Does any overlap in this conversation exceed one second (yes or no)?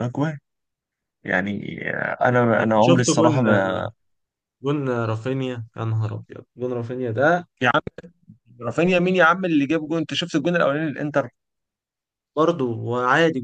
no